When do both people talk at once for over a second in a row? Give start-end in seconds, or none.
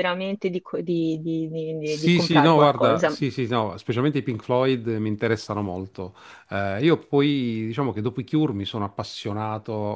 1.9-3.1